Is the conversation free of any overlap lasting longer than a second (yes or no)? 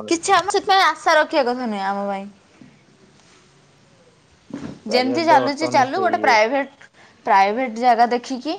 no